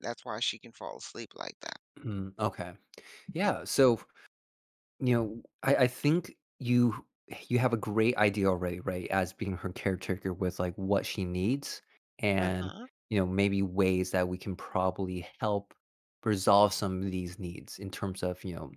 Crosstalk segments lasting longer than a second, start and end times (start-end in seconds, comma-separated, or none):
none